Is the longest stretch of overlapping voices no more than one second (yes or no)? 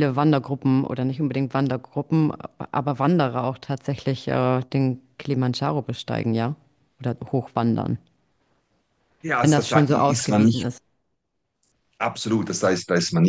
no